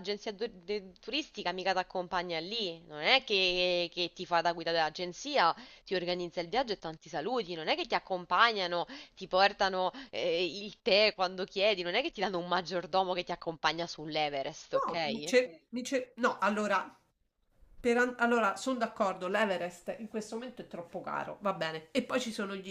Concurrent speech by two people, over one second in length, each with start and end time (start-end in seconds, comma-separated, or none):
none